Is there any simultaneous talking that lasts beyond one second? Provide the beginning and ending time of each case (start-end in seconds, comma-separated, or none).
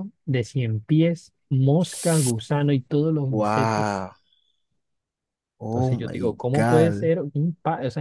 5.7-7.1